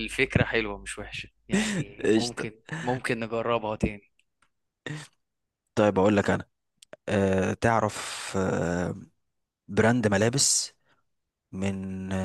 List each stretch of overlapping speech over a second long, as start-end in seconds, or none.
none